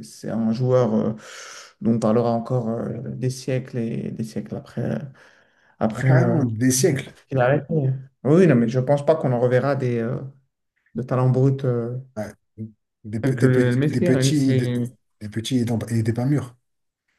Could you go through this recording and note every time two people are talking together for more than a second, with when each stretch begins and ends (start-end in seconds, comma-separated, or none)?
13.2-14.5